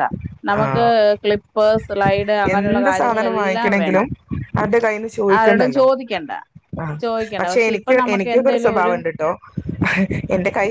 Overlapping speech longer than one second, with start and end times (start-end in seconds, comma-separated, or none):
2.5-4.1